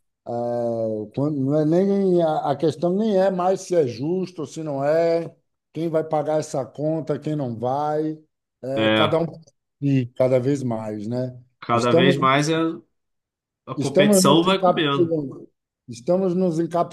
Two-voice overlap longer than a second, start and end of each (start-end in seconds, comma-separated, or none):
13.8-15.2